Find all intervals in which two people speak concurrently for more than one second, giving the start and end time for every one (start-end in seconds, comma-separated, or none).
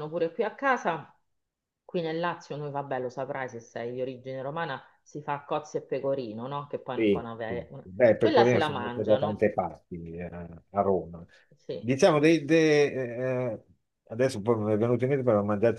6.9-9.4